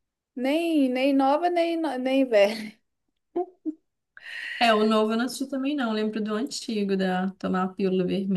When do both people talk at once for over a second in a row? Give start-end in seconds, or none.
none